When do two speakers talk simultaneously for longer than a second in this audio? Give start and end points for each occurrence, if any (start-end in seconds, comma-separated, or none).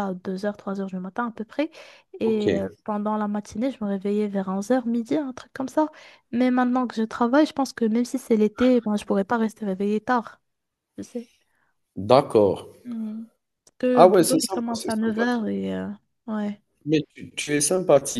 13.9-15.5